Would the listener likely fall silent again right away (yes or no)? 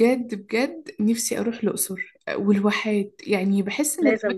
yes